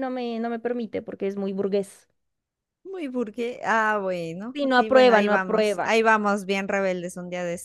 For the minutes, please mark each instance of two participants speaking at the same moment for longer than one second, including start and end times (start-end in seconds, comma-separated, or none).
4.5-6.0